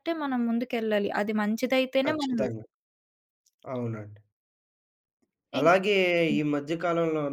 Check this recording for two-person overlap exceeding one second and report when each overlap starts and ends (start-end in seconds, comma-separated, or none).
none